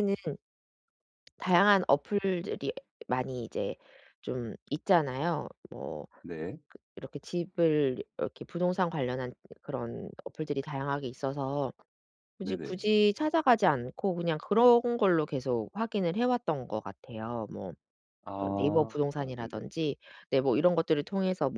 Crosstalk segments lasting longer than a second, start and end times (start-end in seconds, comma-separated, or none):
18.4-19.7